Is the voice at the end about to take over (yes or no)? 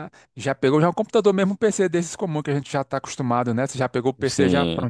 yes